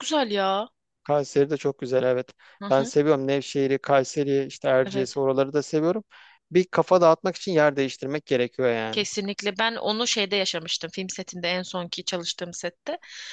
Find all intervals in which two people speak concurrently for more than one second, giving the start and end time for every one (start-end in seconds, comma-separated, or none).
none